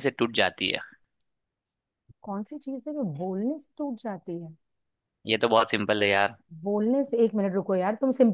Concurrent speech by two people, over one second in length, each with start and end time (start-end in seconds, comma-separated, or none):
none